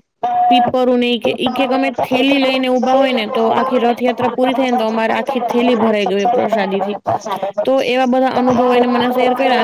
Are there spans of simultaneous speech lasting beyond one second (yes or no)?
yes